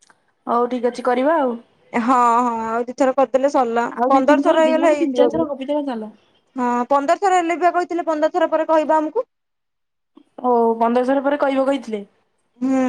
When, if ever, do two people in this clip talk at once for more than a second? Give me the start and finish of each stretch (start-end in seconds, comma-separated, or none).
none